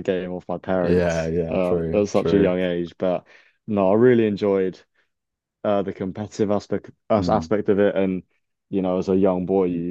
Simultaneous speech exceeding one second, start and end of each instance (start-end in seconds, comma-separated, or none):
0.8-2.6